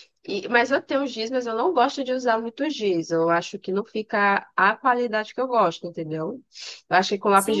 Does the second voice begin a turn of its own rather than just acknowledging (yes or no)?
no